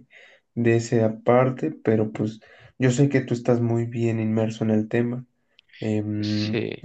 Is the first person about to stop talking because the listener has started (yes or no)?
no